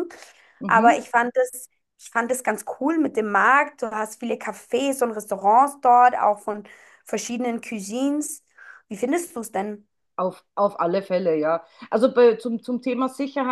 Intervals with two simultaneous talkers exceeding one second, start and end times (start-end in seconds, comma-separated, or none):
none